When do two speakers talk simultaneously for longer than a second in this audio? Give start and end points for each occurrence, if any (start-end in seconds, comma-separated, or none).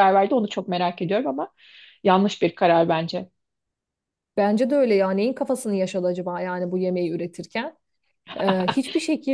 none